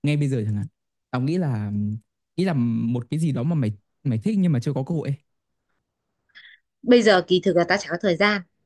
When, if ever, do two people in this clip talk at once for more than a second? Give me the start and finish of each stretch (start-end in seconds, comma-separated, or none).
none